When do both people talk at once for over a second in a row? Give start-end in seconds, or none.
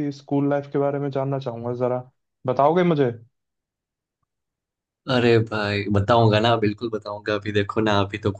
none